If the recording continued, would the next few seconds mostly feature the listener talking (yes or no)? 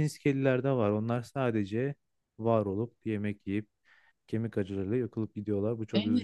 yes